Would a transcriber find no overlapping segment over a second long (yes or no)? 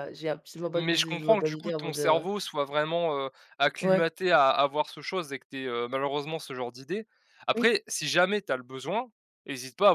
no